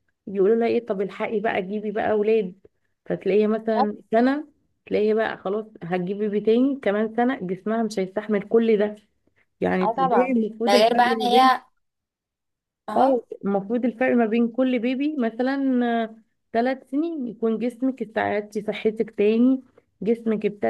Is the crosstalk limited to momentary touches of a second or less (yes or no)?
no